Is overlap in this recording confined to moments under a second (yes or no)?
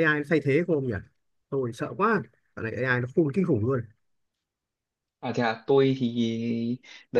yes